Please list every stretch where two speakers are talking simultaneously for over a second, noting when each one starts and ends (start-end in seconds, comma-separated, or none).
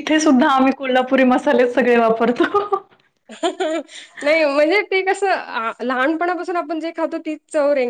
none